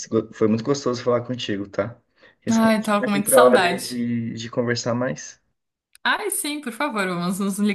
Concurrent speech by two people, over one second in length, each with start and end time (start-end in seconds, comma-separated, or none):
2.5-4.0